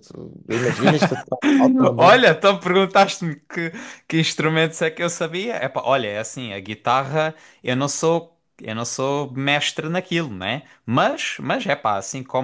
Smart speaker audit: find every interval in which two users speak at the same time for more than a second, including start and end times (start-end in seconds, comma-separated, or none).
none